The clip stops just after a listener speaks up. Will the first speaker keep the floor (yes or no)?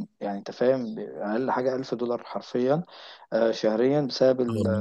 yes